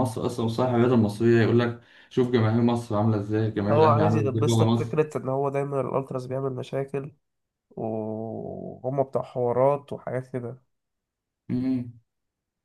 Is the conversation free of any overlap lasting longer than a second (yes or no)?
no